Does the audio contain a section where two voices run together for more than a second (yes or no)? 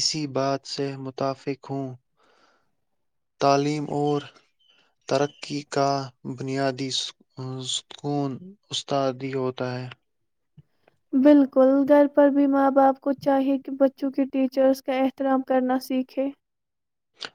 no